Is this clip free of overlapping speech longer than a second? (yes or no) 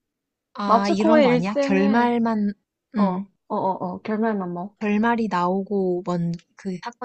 no